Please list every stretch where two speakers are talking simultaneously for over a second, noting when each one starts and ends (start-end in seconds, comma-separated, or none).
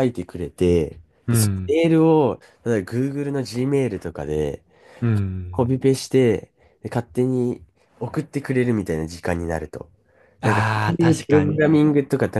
10.4-11.8